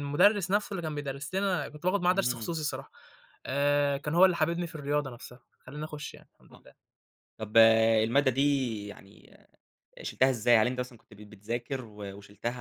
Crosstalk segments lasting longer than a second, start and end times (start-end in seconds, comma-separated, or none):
none